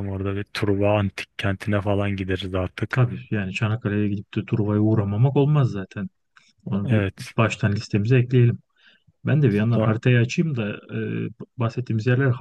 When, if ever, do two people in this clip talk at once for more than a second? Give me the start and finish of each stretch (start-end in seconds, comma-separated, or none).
none